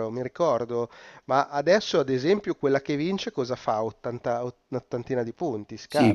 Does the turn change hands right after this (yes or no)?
yes